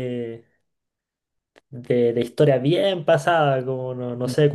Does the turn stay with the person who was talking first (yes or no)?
yes